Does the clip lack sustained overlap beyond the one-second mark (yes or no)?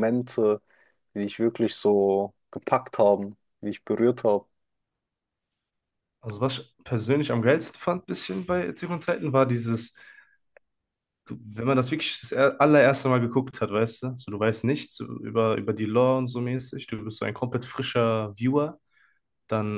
yes